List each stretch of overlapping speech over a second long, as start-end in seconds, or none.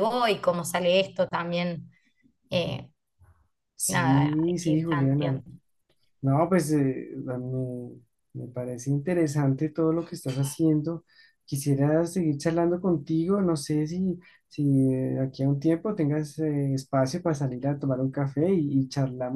3.9-5.4